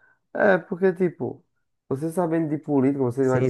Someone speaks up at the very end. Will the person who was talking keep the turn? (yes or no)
no